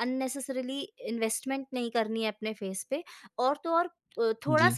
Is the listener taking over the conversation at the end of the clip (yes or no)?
no